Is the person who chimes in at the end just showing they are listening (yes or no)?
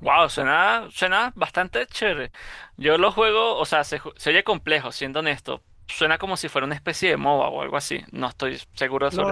no